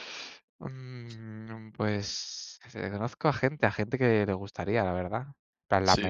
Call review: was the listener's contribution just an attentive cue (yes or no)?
yes